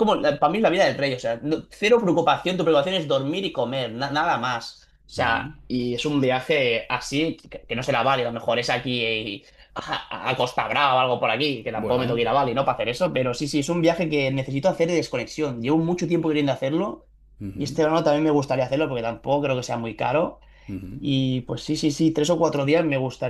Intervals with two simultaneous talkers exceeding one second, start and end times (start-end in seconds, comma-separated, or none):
none